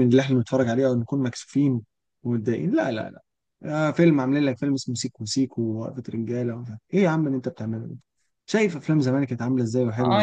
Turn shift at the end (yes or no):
yes